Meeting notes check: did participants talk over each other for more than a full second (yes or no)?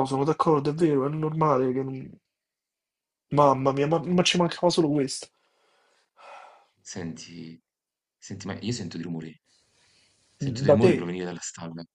no